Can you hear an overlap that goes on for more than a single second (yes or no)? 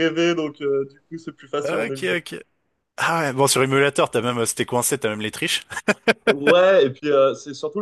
no